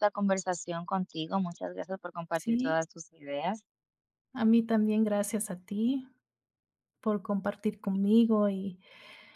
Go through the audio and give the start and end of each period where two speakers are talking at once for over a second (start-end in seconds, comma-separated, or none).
none